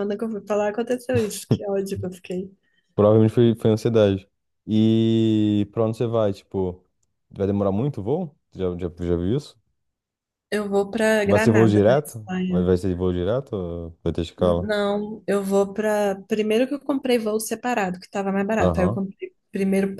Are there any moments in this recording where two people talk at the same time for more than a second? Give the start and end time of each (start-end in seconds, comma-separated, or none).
11.3-12.7